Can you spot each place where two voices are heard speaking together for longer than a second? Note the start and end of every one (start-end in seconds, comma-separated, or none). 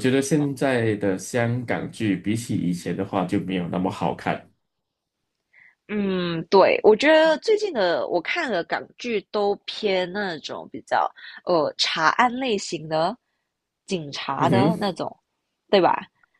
none